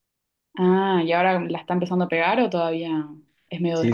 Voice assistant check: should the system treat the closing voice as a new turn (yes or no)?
yes